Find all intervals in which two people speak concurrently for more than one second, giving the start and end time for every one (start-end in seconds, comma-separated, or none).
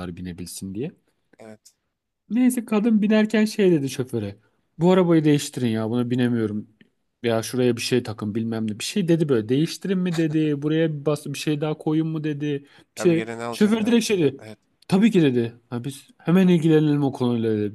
13.0-14.5